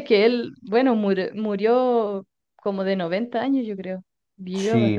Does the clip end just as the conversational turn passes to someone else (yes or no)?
yes